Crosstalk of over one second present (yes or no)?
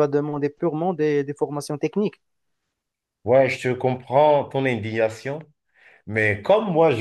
no